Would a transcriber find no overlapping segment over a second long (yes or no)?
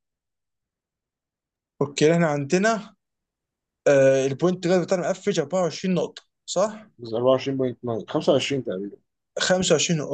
yes